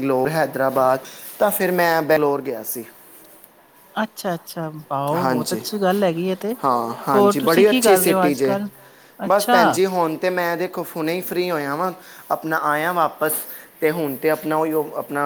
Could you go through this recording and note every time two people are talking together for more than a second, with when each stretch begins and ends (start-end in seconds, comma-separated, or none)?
7.2-8.6